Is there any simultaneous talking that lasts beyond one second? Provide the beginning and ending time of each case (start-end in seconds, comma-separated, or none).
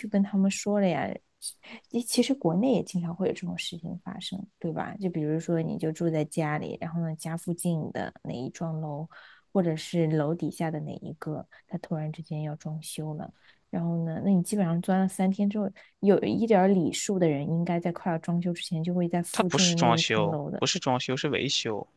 19.3-20.6